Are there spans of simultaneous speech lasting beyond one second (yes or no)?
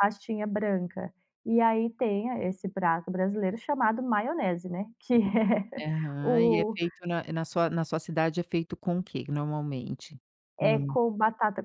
no